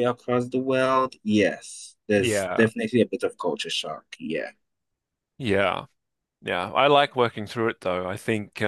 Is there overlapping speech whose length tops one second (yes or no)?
no